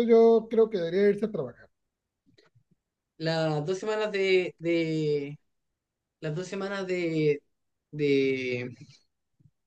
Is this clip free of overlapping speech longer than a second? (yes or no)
yes